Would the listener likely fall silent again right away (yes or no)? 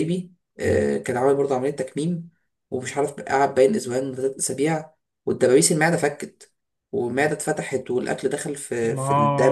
no